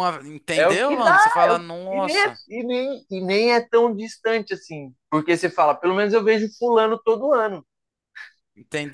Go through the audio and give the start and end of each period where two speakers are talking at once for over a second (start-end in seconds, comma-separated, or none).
0.6-2.4